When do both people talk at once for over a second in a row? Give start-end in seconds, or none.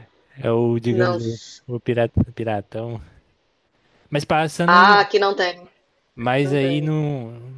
none